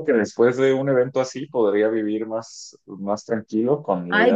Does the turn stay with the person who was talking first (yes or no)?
no